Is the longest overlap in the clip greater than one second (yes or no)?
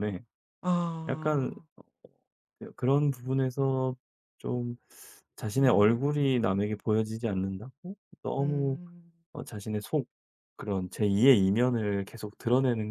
no